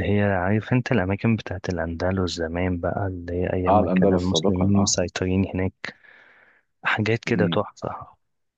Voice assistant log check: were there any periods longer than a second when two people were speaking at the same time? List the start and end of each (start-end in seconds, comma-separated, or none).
3.7-4.9